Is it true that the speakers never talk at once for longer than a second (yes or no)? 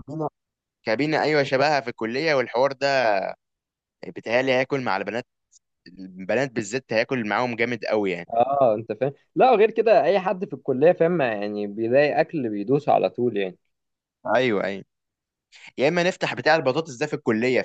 yes